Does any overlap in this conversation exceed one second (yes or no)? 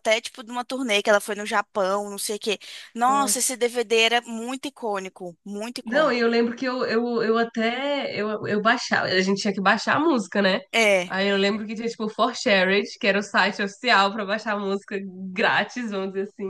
no